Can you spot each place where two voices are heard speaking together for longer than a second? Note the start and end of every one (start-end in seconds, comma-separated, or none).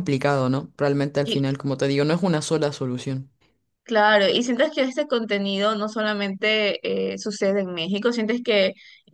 none